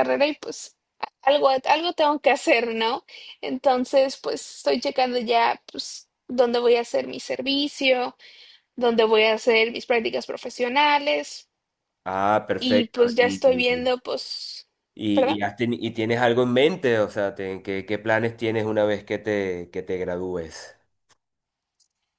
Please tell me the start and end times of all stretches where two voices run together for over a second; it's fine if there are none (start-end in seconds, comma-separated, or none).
12.6-13.8